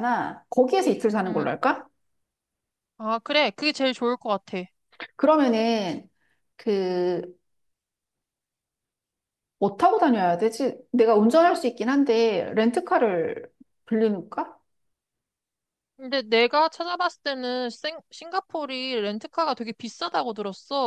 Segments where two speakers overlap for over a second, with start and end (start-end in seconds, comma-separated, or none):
none